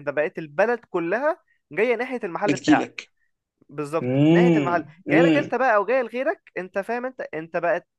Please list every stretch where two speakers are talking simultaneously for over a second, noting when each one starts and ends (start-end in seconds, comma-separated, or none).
4.0-5.5